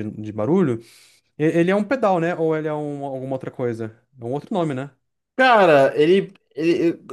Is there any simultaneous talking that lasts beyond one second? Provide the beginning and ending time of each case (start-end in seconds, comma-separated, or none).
none